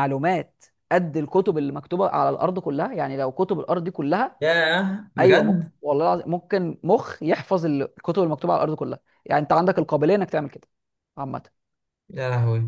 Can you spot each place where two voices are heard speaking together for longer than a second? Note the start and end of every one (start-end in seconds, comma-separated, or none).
none